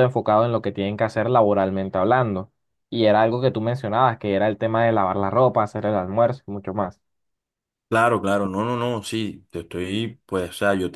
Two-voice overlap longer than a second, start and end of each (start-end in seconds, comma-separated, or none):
none